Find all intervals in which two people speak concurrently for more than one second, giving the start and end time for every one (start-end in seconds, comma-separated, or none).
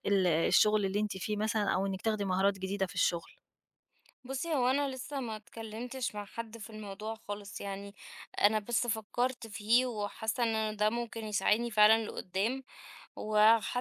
none